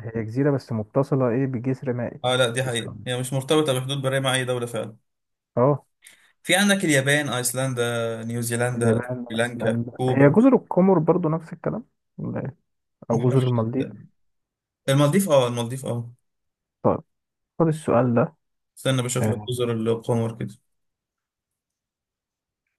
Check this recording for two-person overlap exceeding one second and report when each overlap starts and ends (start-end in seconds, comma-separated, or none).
8.8-10.4